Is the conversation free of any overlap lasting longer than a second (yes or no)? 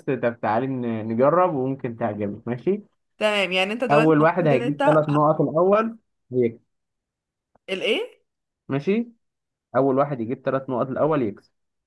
no